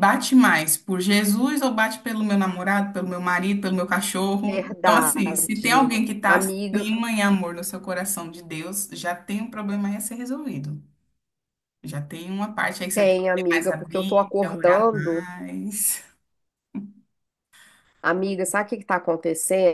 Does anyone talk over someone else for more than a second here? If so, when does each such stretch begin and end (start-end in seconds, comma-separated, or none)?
4.4-6.9, 12.9-15.3